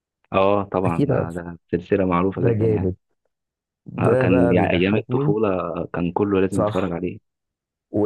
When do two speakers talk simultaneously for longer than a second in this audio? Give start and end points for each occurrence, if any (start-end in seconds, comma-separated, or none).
4.0-5.3